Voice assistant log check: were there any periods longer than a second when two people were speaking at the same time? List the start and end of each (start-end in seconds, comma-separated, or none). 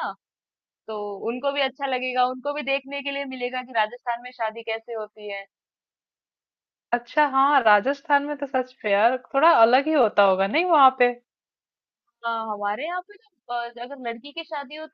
none